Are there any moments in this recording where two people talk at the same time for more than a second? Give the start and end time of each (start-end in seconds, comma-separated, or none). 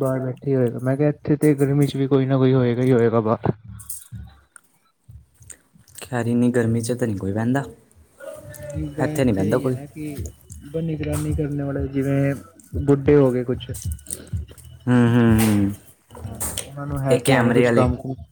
none